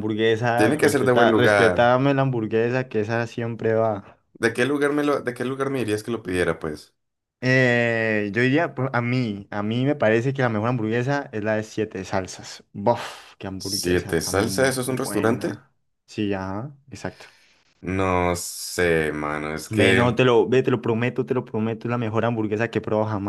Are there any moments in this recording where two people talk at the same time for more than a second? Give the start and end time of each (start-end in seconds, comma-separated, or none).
0.5-1.9, 13.6-15.6